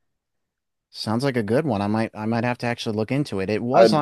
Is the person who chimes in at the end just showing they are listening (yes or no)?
yes